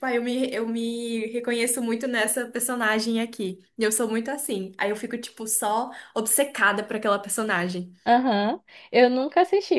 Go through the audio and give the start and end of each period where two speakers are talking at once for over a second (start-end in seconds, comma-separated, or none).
none